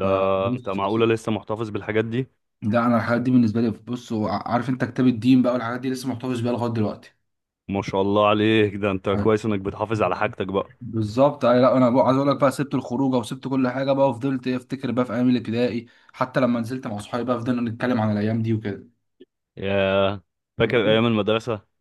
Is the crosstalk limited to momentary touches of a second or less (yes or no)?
yes